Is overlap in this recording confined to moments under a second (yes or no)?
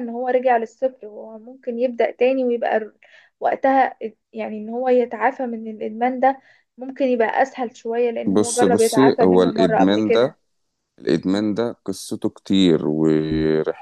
no